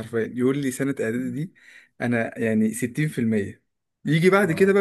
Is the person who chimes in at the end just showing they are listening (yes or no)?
yes